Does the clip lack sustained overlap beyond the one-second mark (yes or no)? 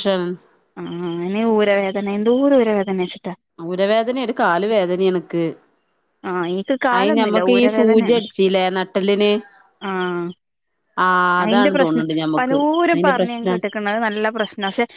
no